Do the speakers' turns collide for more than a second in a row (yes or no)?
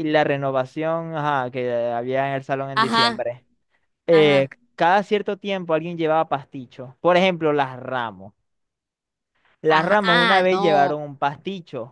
yes